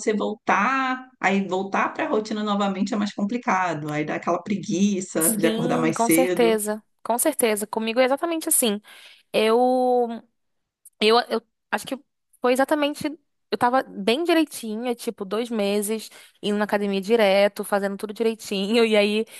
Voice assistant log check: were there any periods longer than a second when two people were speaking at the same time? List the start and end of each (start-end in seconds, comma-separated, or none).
5.2-6.6